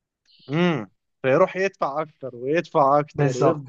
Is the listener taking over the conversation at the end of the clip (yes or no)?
yes